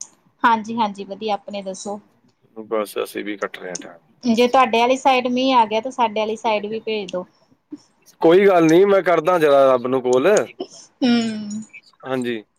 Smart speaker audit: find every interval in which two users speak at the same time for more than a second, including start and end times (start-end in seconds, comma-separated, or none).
none